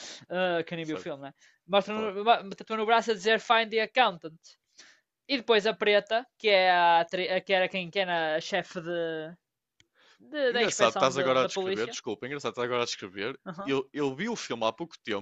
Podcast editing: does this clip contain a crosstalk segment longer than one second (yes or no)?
yes